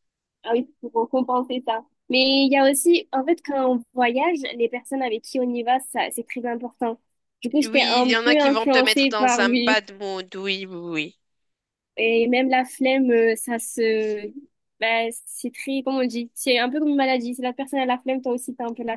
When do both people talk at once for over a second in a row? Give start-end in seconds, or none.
7.6-9.8